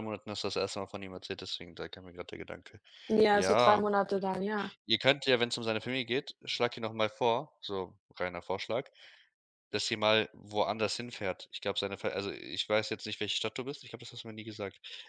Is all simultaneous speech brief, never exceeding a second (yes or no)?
yes